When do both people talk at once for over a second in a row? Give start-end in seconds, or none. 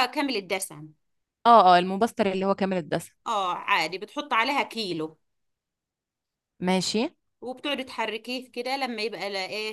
none